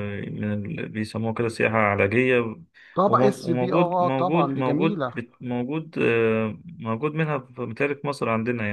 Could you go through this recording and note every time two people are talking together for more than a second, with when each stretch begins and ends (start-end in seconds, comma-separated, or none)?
3.1-5.2